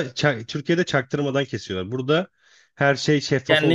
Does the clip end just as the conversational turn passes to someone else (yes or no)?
yes